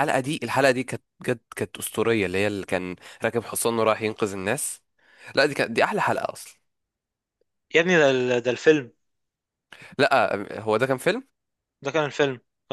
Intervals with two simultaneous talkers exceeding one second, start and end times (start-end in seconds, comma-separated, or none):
none